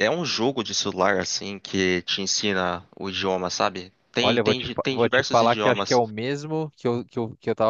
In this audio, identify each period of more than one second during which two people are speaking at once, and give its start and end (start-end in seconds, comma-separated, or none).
4.2-6.0